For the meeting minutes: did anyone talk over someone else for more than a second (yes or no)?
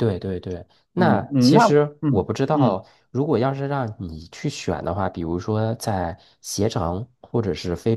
yes